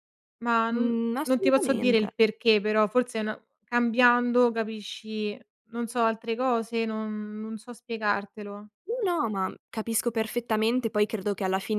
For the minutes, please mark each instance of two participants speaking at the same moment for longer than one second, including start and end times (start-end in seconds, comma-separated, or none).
0.7-2.1